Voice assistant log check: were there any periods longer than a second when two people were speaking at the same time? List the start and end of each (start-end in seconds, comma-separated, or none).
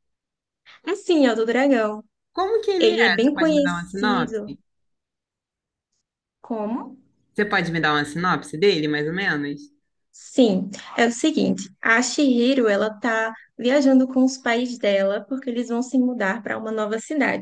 2.8-4.6